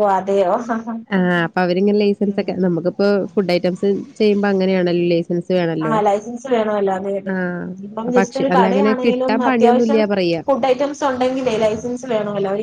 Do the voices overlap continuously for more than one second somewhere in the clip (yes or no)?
yes